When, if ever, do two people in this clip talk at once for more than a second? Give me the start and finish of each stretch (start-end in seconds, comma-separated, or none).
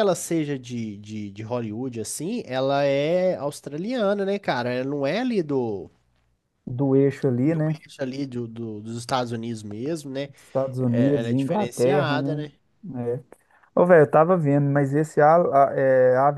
10.8-12.5